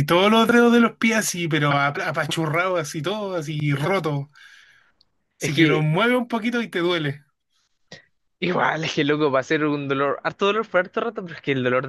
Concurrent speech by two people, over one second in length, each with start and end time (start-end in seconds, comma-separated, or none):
none